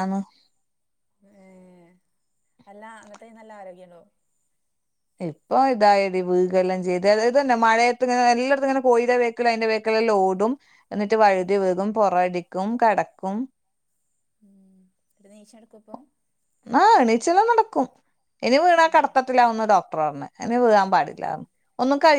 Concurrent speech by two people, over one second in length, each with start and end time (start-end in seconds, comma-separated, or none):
none